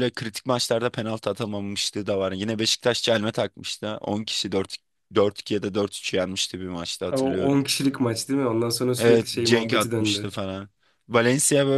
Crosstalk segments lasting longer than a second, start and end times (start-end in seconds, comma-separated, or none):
9.0-10.3